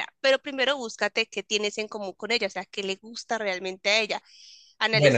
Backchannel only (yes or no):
no